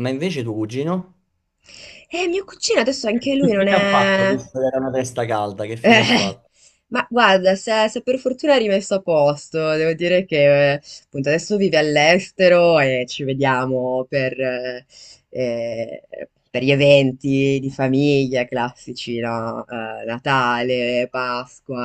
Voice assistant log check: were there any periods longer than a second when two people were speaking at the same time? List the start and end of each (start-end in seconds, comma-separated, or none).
3.1-4.4